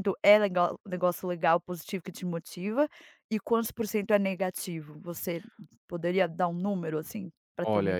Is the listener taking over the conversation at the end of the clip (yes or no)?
yes